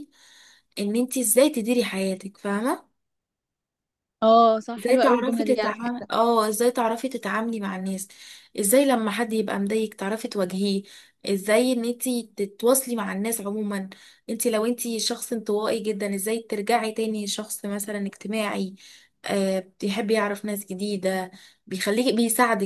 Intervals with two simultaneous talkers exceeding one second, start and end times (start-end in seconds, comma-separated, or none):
4.8-6.1